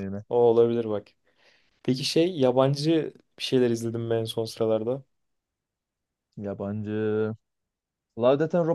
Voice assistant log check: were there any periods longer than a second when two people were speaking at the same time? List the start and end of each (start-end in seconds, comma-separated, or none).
none